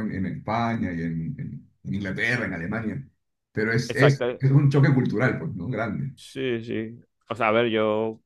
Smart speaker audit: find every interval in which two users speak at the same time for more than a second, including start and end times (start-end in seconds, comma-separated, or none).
none